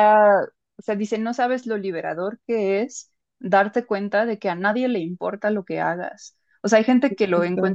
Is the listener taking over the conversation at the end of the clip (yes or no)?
no